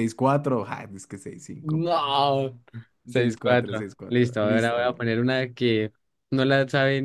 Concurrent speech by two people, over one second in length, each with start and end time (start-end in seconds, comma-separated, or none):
3.1-5.0